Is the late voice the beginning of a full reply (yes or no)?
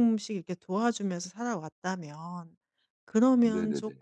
no